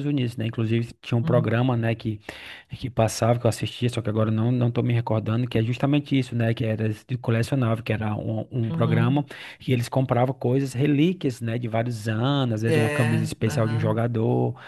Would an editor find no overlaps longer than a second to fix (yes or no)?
no